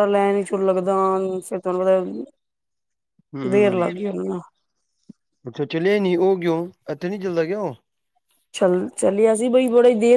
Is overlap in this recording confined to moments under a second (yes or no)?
yes